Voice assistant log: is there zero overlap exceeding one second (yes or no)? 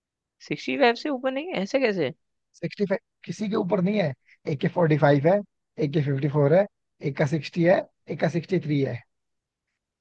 yes